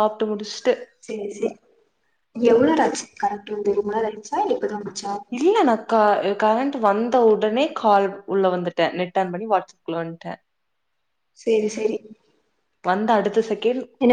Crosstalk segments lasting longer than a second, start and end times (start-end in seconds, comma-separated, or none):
none